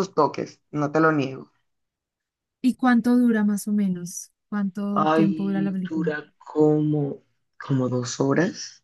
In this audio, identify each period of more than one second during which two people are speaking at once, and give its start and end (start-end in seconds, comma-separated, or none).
4.9-6.1